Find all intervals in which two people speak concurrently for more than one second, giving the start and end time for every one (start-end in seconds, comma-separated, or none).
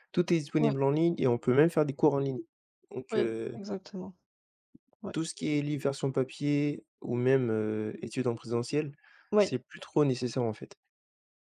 none